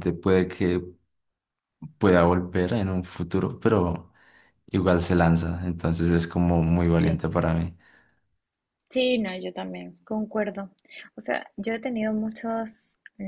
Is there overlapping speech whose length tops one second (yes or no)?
no